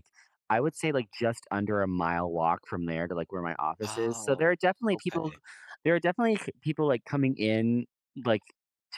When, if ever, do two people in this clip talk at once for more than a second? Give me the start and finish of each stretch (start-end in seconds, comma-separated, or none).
3.9-5.3